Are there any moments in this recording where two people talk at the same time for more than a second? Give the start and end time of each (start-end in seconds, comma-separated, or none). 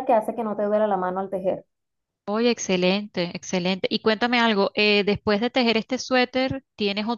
none